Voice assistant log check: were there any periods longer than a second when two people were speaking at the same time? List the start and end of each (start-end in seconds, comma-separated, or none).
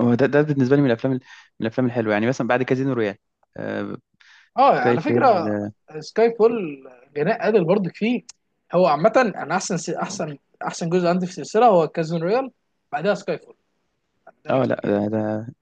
none